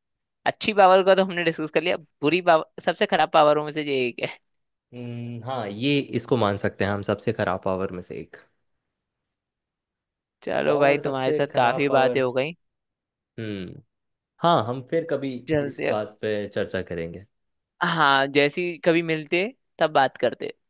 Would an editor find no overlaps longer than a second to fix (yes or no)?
no